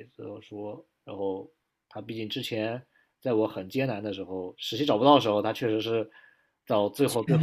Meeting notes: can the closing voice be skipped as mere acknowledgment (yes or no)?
yes